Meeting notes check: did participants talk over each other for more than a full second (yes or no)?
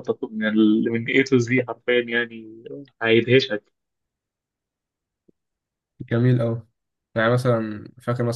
no